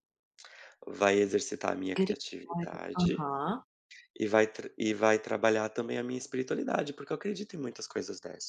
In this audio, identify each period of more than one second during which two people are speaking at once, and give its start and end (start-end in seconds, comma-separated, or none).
1.9-3.3